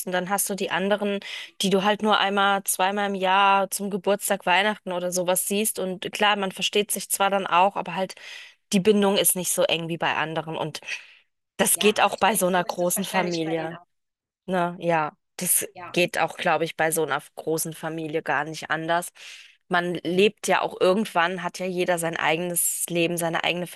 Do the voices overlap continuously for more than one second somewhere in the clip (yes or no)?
yes